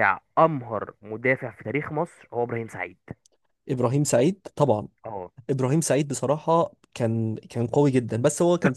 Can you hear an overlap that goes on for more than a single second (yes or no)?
no